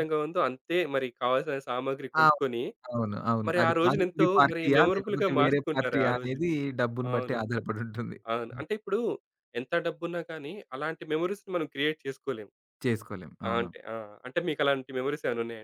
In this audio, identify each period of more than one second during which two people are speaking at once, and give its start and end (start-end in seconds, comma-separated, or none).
3.5-6.5